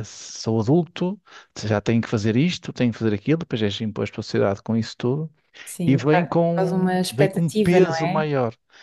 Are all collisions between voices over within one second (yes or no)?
no